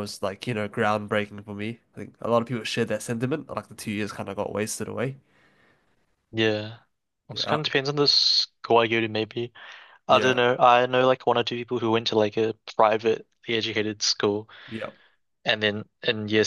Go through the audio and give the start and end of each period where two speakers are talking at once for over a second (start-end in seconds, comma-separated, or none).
none